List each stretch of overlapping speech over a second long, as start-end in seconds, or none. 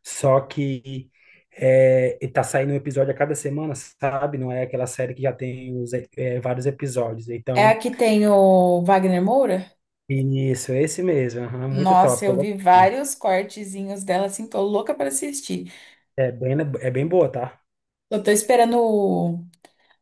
11.7-12.9